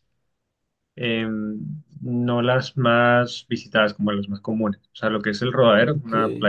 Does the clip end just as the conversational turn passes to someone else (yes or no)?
no